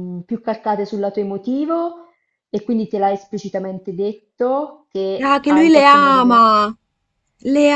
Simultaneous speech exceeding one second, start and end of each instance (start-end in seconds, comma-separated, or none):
5.2-6.5